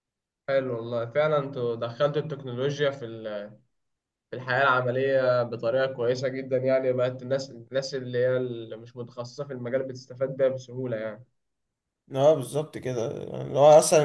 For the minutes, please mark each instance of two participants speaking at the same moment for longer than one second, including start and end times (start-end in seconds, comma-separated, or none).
none